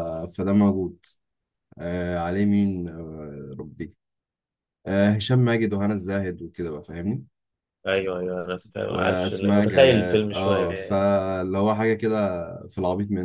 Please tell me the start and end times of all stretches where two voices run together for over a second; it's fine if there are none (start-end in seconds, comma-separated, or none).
8.9-11.1